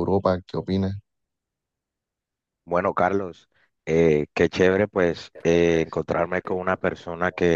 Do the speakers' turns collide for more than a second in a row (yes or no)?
yes